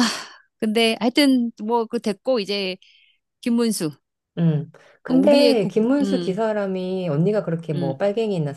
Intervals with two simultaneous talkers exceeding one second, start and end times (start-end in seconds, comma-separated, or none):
5.1-6.3